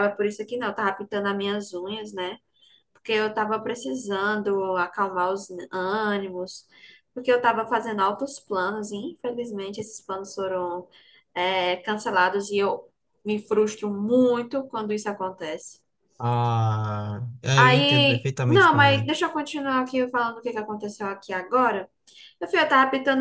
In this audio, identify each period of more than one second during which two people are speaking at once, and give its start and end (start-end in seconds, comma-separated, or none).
17.6-19.1